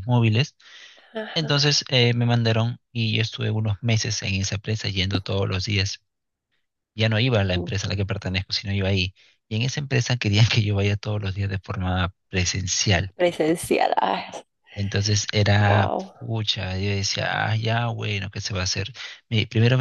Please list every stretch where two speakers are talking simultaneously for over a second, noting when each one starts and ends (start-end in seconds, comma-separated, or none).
none